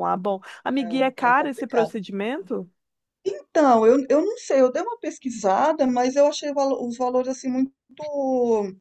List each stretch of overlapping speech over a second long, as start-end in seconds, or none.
0.7-2.0